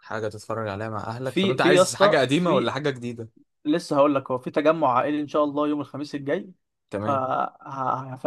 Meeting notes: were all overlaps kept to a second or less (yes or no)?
no